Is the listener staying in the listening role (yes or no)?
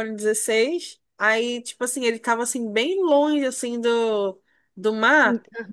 yes